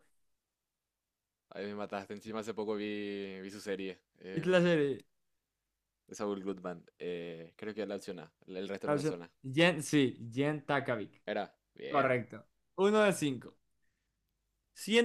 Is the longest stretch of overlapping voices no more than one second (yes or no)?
yes